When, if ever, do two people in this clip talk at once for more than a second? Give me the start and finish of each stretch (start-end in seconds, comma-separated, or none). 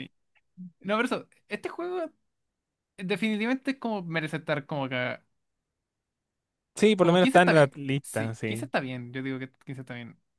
7.0-8.7